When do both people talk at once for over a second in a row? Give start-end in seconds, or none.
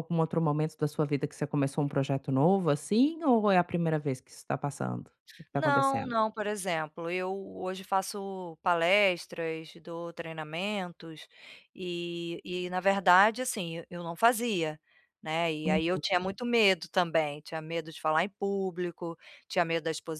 none